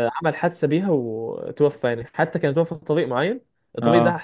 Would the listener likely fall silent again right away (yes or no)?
yes